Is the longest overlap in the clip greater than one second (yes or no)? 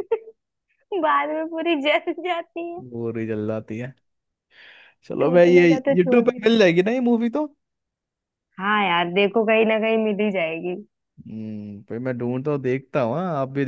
yes